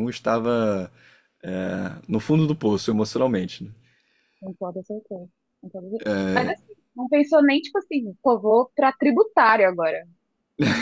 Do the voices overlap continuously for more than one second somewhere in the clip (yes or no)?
no